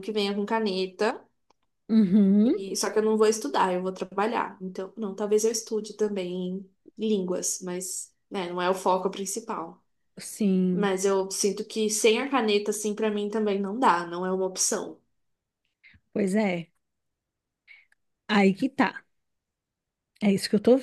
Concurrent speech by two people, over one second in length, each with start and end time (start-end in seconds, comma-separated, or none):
none